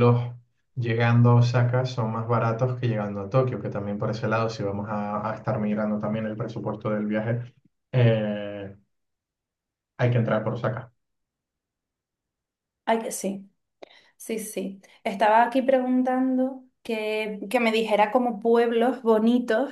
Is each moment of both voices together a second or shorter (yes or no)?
yes